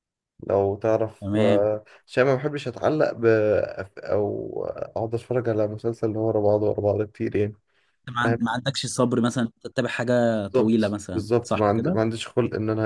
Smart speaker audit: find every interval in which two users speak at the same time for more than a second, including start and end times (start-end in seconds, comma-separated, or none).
10.5-12.0